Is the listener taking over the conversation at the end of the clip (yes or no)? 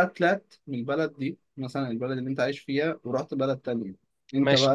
yes